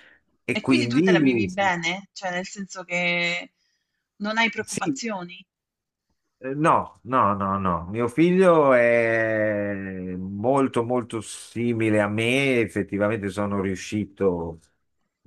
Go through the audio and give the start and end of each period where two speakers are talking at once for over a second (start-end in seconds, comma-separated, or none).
0.5-1.7